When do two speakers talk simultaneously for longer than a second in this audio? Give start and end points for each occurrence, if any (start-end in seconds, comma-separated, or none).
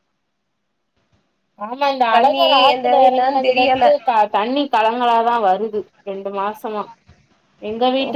2.1-3.8